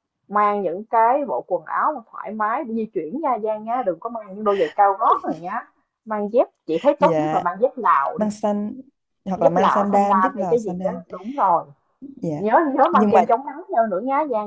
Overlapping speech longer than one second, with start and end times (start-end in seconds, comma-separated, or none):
9.4-11.0